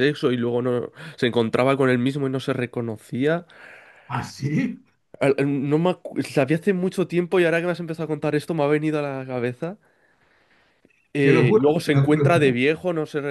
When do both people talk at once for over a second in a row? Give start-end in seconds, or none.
11.2-12.6